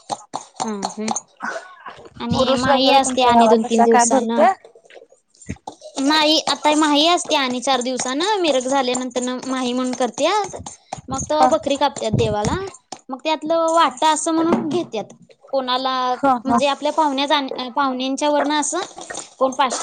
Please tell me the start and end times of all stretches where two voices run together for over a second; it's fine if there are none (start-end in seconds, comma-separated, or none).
2.4-4.4